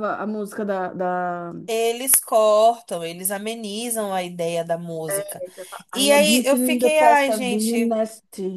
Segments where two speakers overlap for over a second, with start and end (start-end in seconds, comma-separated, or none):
5.9-8.0